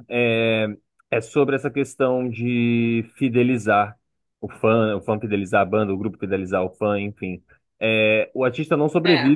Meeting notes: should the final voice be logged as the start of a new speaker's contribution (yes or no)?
no